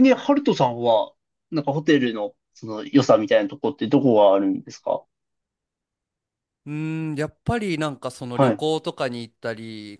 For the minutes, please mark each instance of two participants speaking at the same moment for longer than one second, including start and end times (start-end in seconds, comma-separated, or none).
none